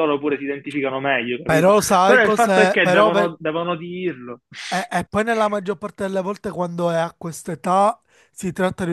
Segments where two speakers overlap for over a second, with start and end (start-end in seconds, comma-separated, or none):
1.4-3.3